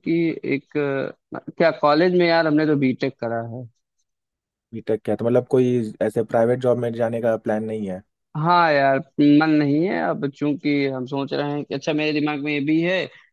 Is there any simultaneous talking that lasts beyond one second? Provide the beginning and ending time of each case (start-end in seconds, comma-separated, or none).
none